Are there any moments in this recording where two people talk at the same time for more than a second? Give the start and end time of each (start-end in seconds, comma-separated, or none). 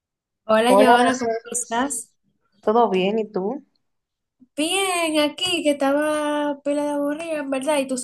0.7-2.0